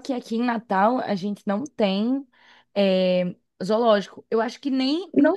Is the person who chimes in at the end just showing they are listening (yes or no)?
yes